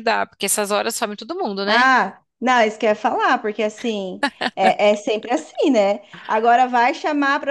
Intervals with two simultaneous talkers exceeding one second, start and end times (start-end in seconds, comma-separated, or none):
none